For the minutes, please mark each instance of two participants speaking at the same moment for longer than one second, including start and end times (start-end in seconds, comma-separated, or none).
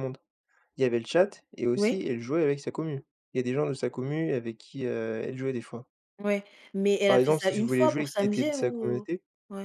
7.0-9.1